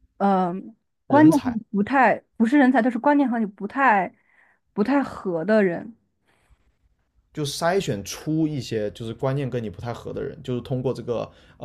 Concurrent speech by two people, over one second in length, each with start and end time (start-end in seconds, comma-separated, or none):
none